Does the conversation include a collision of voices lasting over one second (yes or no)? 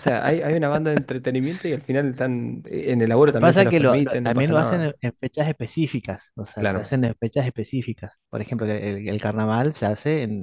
yes